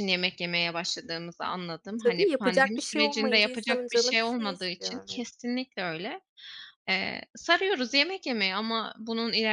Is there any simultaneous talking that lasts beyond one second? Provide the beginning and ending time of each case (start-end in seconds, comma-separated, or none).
2.0-5.2